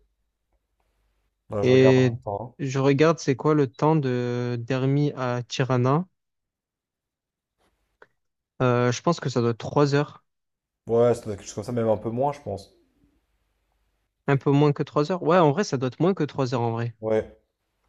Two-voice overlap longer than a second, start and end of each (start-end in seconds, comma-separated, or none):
none